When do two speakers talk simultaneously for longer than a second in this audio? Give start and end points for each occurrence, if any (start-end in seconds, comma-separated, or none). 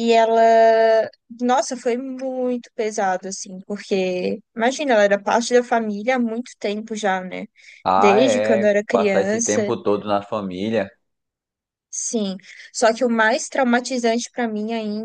7.9-9.7